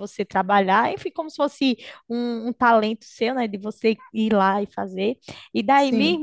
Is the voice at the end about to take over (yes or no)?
no